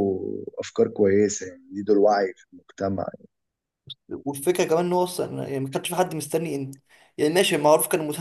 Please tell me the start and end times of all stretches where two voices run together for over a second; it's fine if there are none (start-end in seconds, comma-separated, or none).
none